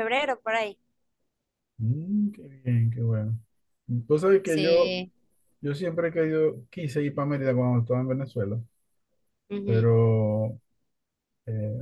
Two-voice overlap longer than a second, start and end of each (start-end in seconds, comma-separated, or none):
none